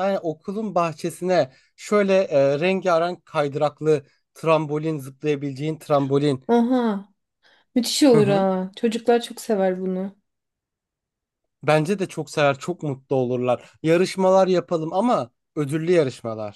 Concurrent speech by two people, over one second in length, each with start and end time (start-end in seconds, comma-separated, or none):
none